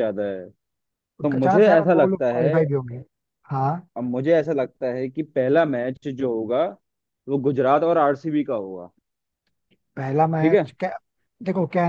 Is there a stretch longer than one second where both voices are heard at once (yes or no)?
yes